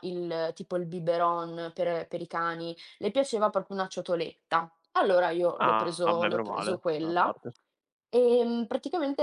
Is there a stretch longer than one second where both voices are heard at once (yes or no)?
yes